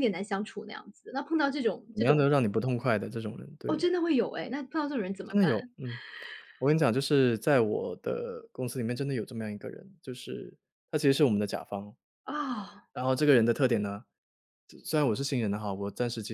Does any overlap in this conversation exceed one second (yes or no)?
no